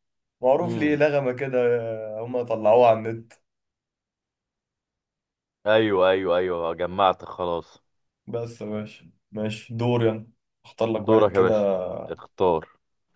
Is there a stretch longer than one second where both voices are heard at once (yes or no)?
no